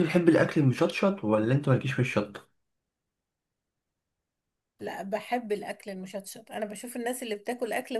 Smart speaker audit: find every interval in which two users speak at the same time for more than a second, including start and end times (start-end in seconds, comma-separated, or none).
none